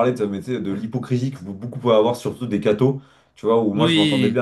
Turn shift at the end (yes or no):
no